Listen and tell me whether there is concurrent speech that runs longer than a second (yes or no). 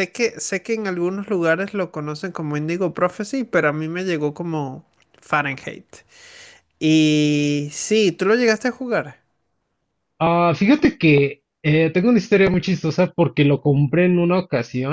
no